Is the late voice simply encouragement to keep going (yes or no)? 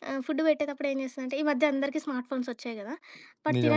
yes